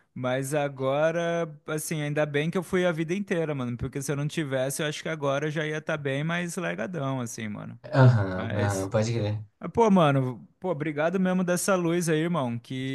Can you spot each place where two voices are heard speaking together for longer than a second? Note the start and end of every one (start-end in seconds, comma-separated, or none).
none